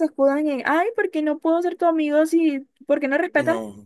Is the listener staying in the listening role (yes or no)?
yes